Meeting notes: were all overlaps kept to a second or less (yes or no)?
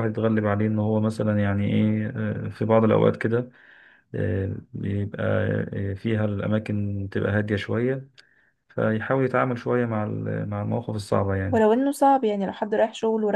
yes